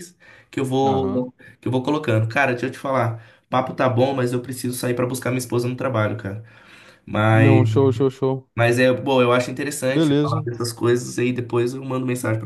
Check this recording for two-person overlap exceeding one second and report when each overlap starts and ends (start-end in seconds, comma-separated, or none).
none